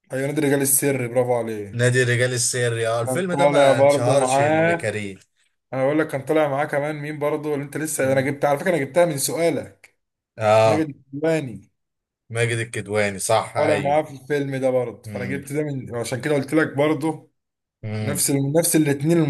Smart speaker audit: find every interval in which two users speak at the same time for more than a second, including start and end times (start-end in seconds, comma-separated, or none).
3.0-4.9